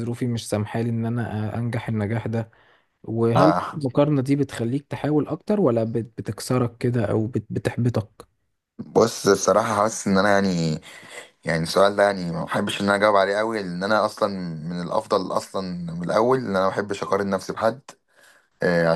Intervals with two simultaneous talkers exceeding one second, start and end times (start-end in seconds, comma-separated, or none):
none